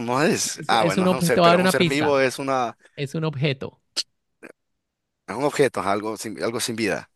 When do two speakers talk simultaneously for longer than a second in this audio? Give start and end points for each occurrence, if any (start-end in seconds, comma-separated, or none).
0.5-2.1